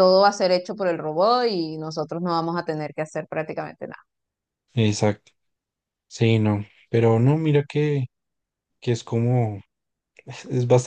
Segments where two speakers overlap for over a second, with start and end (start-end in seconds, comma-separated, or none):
none